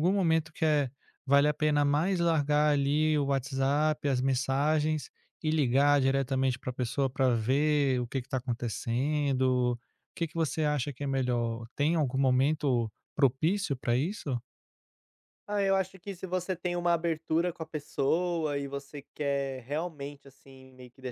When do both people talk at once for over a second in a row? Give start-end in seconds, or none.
none